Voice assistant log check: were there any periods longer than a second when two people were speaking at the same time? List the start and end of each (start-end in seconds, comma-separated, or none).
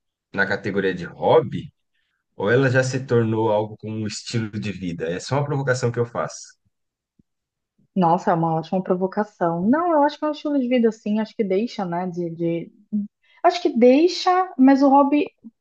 none